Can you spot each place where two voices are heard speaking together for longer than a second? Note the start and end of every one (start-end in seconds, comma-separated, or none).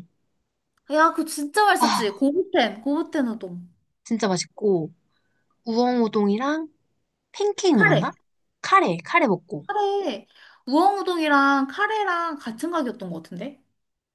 none